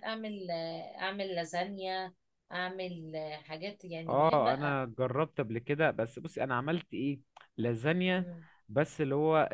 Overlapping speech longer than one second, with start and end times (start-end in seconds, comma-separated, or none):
none